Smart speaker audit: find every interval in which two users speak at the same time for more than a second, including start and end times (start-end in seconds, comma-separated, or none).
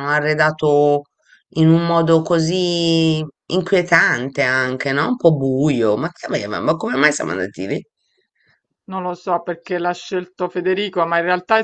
none